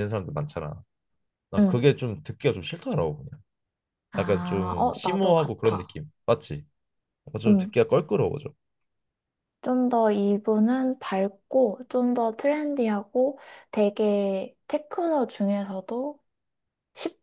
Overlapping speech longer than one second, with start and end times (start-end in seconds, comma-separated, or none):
4.2-6.0